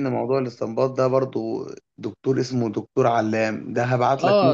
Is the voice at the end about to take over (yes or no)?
yes